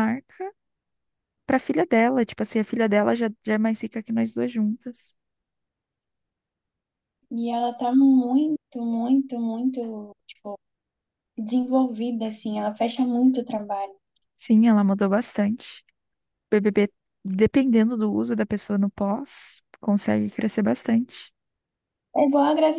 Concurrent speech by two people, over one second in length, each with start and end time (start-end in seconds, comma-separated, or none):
none